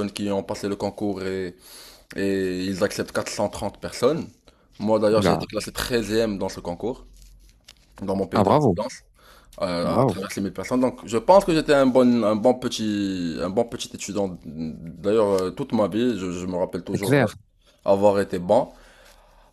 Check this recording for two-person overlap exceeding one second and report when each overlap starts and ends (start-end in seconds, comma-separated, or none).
none